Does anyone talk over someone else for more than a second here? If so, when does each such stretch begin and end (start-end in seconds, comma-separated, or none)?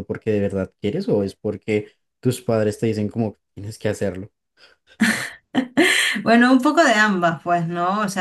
none